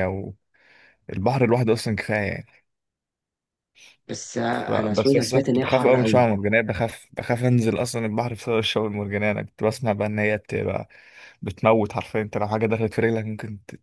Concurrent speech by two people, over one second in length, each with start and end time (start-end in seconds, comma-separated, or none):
4.5-6.3